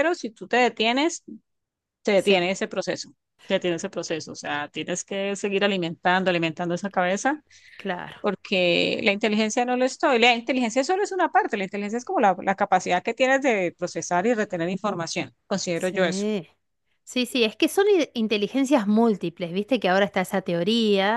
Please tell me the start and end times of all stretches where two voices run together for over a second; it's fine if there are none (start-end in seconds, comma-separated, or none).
none